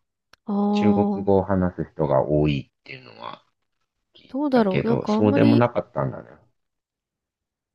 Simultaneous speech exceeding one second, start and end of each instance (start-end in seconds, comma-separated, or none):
4.3-5.7